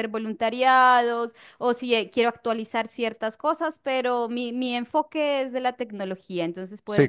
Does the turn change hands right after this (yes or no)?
yes